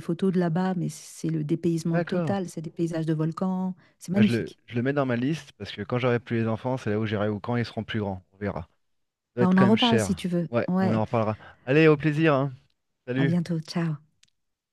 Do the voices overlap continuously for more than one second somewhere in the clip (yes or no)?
yes